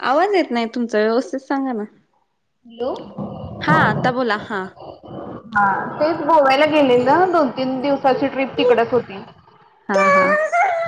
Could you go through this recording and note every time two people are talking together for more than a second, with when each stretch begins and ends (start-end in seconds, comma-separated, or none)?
none